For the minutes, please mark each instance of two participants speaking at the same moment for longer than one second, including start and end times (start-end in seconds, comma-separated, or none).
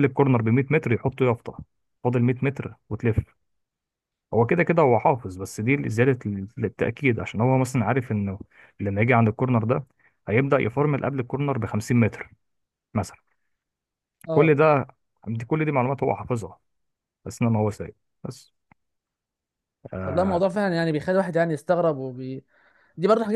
none